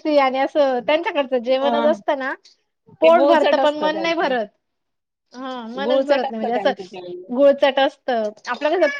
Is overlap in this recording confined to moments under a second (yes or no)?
no